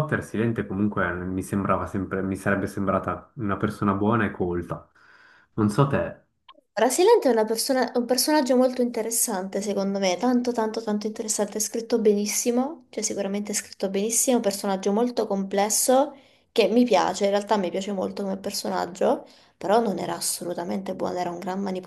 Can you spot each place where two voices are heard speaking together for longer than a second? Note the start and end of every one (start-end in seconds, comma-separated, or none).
none